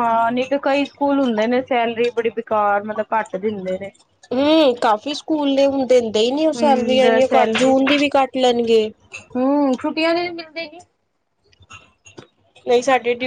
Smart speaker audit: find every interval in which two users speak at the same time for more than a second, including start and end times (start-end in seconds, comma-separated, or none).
6.5-7.8